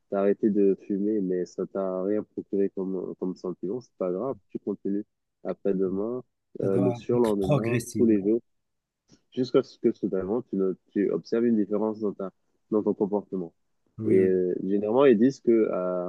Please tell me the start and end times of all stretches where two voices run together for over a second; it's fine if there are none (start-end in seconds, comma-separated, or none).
6.6-8.2